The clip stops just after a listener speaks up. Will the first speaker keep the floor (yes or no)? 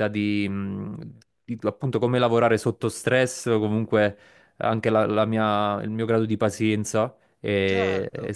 yes